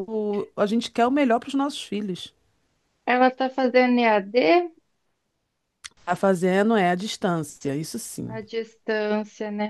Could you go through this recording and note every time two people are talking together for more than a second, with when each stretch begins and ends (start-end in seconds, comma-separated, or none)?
none